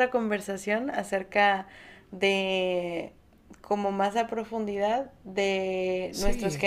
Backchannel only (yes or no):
yes